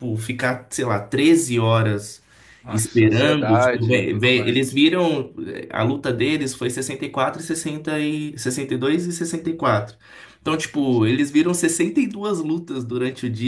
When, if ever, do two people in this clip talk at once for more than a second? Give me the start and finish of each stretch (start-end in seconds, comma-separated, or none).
2.7-4.8